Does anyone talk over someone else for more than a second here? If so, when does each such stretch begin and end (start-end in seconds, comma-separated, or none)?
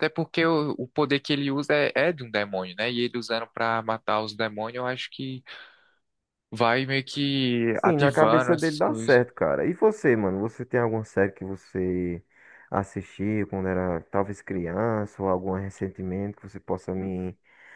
7.7-9.2